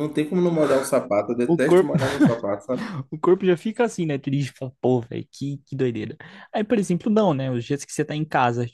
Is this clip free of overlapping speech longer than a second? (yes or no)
yes